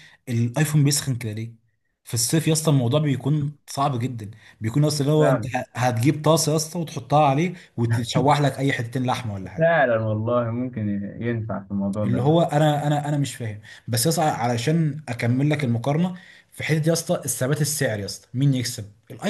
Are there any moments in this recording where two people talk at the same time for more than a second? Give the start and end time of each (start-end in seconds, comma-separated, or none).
none